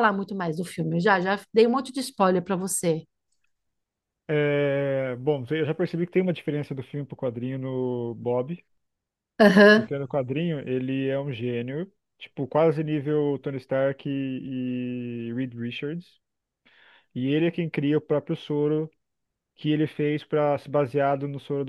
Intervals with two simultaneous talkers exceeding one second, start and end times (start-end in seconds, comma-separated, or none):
none